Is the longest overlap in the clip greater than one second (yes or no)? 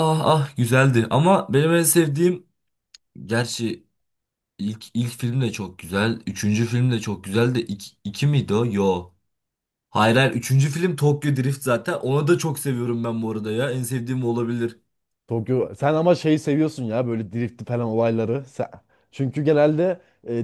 no